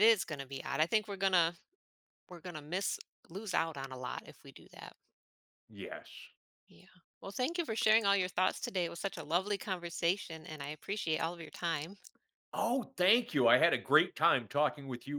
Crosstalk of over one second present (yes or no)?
no